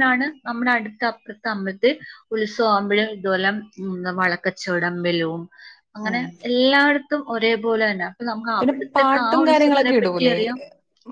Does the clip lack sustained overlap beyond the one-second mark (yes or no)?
no